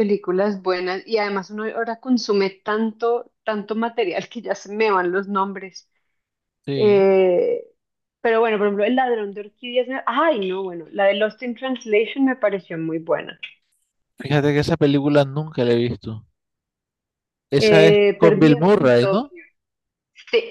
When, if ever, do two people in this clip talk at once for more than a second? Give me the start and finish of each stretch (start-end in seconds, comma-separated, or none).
17.6-19.3